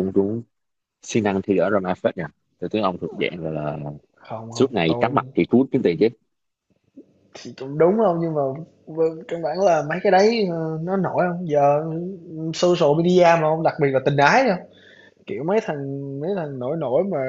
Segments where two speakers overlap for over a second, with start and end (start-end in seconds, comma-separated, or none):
none